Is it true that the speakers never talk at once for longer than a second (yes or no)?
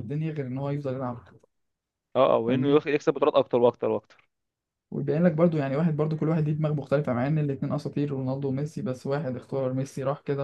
yes